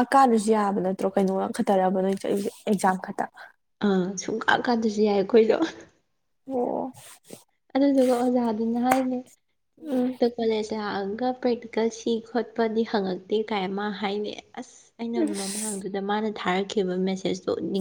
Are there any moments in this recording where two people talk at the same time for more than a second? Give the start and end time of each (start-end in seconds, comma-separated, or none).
none